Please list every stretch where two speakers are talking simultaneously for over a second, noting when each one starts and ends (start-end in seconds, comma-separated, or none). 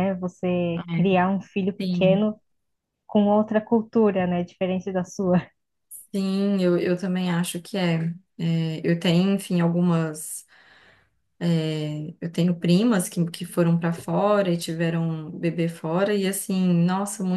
none